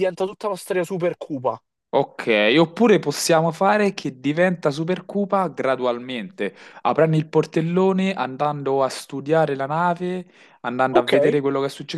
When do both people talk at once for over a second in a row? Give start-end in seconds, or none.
none